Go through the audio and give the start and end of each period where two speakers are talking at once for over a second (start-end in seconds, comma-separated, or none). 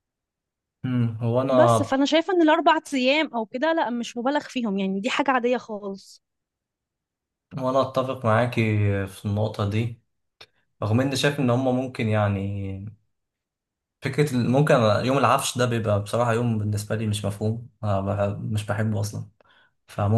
none